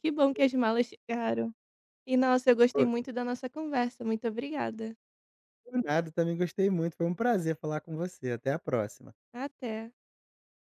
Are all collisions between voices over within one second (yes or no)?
yes